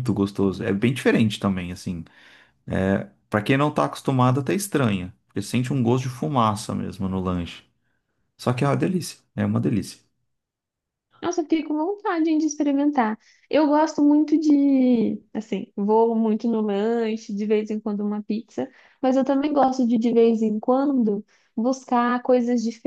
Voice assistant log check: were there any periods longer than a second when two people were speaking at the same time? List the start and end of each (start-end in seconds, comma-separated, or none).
none